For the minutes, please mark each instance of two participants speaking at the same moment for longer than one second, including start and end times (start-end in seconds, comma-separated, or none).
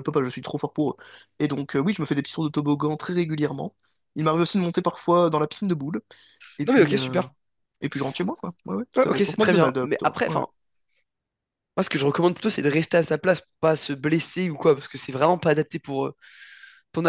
8.9-10.4